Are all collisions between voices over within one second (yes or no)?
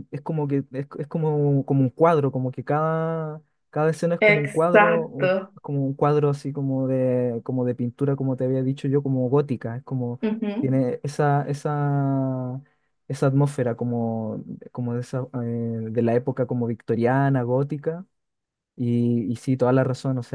no